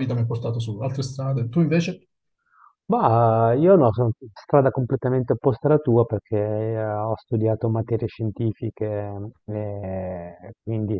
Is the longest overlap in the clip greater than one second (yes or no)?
no